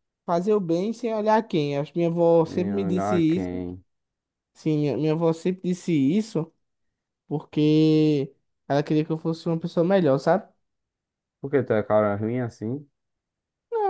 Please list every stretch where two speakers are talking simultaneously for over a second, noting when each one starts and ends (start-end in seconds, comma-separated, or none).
2.4-3.7